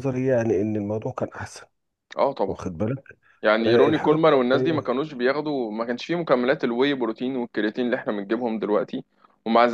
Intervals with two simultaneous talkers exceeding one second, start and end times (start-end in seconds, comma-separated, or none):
3.7-5.0